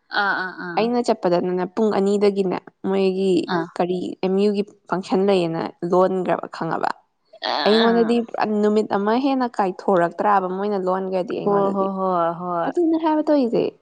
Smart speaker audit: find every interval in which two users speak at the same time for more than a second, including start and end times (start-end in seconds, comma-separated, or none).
none